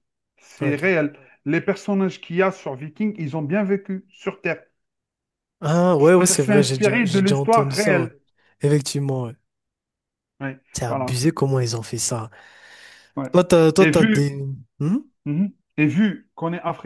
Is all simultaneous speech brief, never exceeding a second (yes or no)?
no